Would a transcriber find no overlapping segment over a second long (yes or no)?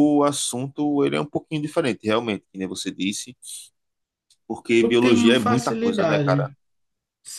no